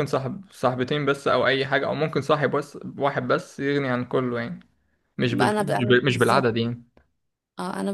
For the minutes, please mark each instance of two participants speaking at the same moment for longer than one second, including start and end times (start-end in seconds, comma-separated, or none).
5.3-6.5